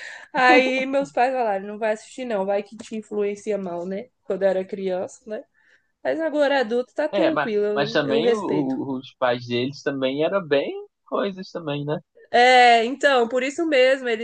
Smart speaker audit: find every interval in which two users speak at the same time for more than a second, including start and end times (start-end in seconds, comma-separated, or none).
7.1-8.8